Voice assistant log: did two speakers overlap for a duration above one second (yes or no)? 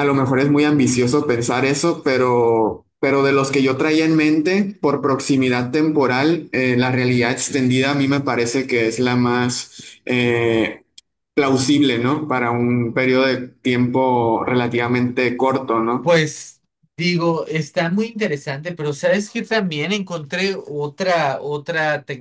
no